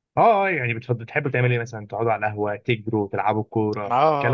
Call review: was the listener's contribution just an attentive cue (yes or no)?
no